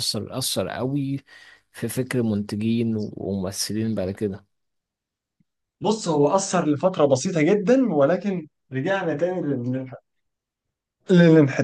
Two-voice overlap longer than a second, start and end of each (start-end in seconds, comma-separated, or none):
none